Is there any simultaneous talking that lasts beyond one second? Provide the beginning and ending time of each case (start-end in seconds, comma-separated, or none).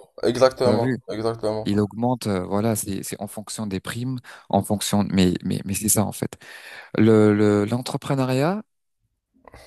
none